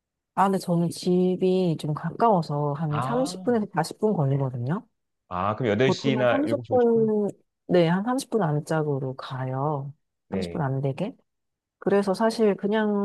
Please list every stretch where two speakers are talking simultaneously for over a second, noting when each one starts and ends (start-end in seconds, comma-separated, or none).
5.8-7.1